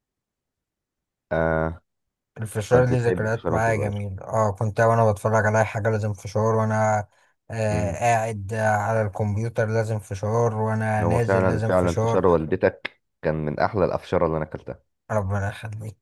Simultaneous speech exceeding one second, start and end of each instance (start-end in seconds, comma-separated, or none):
2.7-4.0, 11.0-12.2